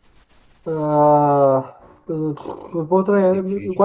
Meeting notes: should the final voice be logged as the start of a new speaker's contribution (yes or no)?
no